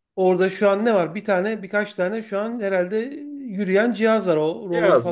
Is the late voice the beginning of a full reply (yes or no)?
yes